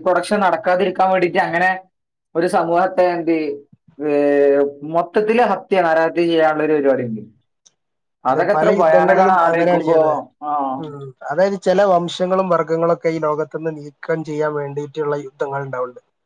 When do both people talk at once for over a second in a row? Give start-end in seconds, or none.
8.3-10.0